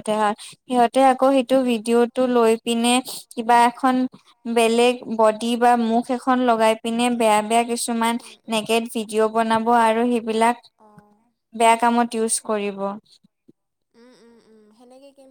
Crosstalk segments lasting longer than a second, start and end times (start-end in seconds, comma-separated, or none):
none